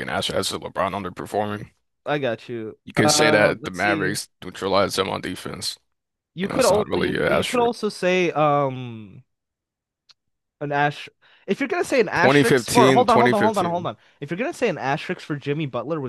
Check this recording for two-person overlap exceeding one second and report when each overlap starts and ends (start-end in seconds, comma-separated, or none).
2.9-4.2, 6.4-7.7, 12.1-13.9